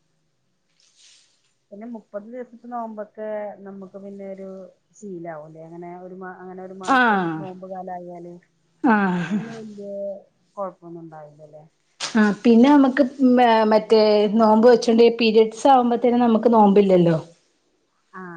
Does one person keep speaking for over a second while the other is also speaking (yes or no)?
no